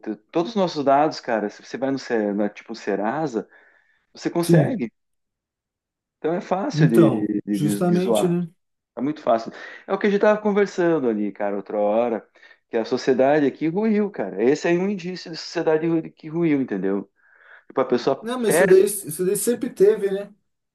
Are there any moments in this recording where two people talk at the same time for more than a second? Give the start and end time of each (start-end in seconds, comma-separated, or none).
6.7-8.4